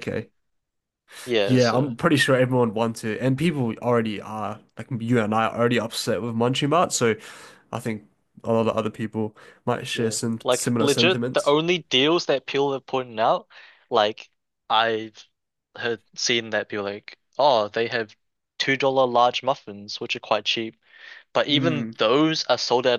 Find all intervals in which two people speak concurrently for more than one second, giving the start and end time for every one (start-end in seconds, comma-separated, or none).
9.9-11.6